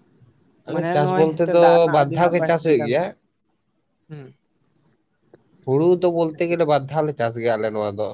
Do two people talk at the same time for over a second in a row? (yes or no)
yes